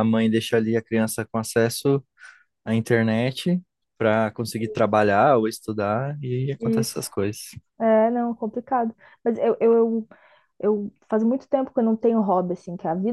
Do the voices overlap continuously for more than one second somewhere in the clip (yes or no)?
no